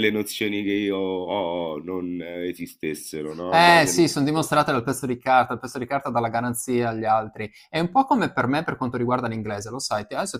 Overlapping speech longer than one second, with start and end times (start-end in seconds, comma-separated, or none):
none